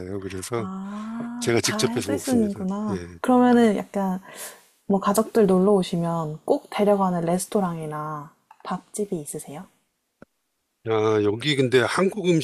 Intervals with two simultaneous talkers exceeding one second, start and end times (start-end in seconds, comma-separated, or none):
1.4-3.2